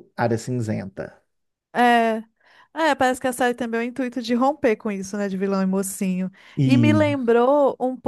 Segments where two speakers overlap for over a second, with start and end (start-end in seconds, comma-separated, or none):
none